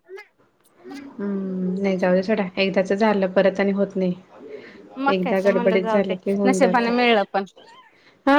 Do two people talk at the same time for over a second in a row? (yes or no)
yes